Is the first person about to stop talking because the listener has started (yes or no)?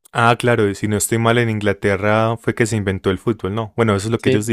yes